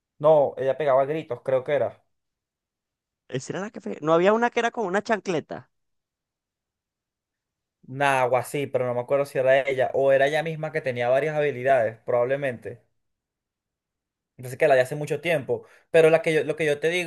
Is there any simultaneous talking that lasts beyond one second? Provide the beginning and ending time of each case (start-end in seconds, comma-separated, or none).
none